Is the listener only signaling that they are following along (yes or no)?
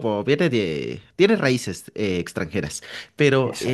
yes